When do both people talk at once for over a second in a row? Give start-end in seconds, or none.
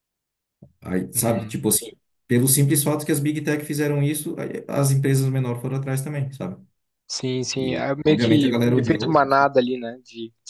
7.5-9.4